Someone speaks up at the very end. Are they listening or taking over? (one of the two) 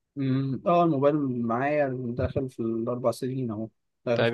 taking over